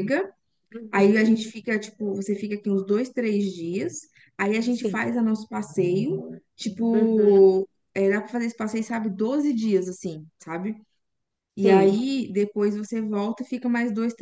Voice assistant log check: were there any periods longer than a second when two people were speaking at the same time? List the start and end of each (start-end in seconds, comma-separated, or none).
none